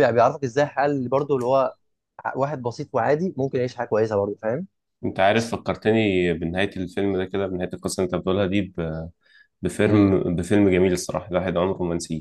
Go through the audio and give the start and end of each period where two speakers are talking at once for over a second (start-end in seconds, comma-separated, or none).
none